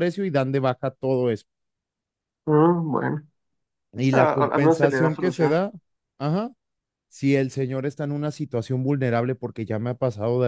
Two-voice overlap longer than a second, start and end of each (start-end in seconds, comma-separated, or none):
4.1-5.6